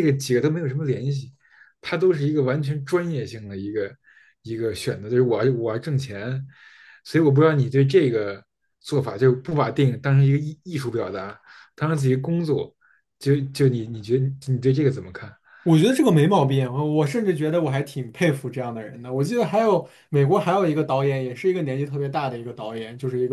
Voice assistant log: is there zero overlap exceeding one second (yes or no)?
yes